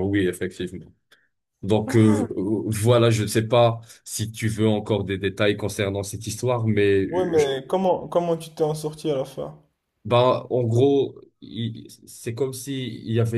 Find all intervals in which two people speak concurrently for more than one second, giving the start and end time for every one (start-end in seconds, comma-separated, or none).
none